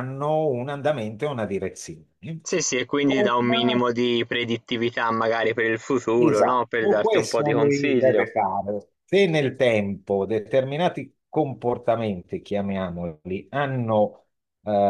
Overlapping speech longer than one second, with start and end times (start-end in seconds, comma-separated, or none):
6.2-8.3